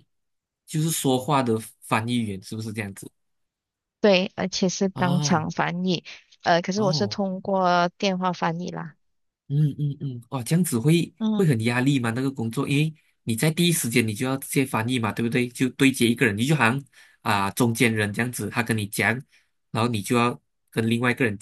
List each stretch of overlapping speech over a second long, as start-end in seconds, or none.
none